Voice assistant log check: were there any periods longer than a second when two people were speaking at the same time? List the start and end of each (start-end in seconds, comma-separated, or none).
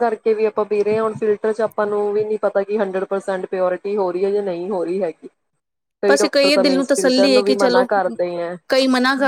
6.1-7.9